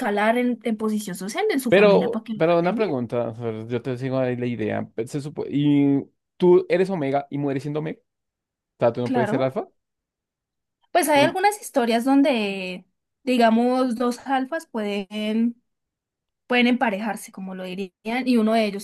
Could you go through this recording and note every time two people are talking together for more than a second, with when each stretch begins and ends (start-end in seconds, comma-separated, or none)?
1.7-3.0